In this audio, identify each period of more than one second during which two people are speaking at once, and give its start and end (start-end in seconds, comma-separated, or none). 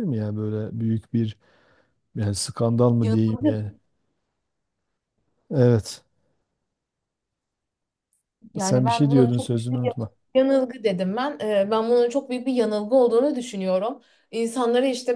8.6-9.9